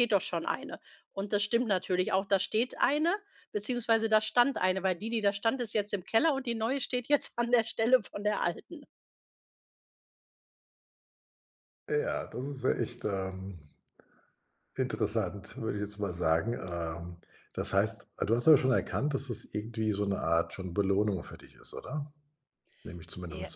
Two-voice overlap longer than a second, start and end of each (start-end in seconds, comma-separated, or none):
none